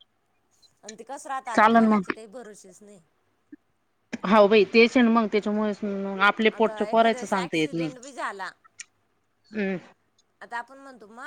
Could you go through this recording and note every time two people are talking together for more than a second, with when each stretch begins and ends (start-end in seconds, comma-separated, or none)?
6.5-7.9